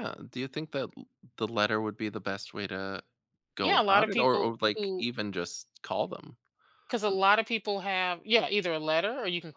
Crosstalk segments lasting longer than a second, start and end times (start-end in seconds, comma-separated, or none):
3.6-5.1